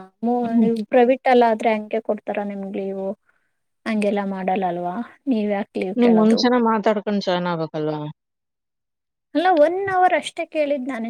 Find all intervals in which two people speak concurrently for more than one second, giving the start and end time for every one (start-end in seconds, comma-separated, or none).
none